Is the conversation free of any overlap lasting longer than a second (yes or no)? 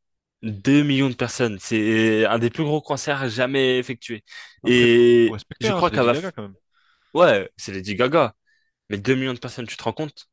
no